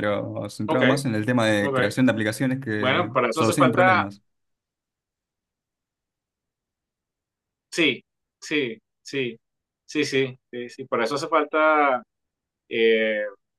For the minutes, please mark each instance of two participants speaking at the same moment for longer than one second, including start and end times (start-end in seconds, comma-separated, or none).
2.8-4.0